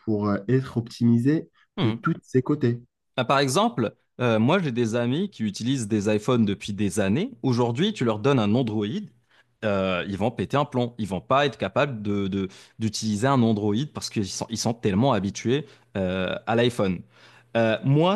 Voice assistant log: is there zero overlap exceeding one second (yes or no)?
yes